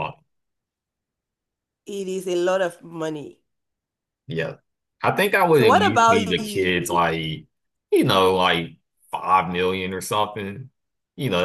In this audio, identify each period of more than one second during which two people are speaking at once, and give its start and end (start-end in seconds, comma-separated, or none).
5.5-6.7